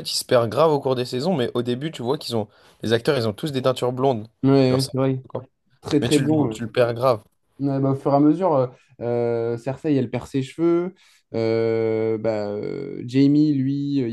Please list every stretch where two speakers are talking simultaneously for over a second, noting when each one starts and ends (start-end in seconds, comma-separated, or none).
none